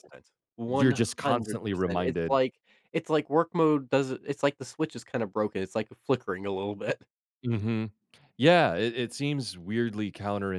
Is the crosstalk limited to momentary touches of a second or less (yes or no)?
no